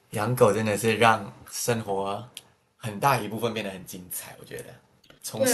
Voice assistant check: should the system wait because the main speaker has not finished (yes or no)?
no